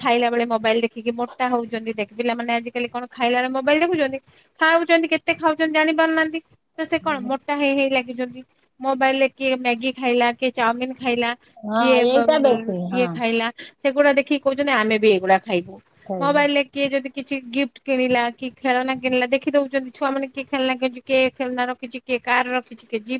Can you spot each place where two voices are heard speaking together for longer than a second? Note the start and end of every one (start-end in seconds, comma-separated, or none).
none